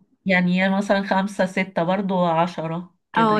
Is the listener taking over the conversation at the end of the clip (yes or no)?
yes